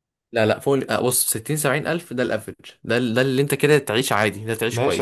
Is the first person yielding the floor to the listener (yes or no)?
yes